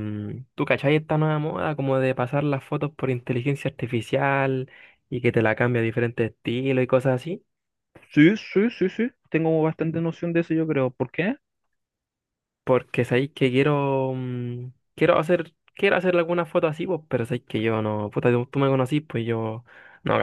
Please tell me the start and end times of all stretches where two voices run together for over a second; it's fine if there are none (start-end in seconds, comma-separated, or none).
none